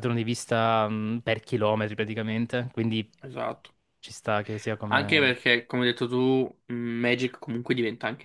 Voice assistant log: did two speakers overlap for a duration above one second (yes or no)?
no